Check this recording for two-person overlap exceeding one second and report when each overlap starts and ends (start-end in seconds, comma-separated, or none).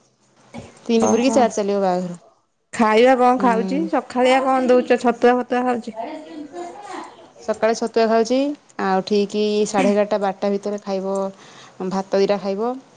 none